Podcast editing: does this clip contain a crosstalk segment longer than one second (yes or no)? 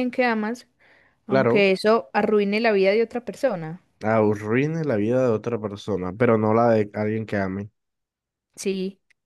no